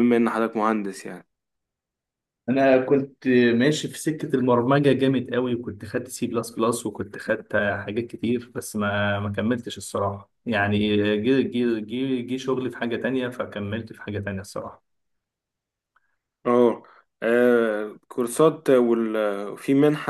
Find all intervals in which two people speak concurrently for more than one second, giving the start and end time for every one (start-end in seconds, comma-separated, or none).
none